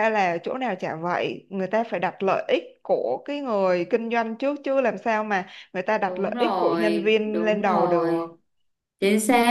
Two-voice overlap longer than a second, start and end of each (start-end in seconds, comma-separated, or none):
6.1-8.3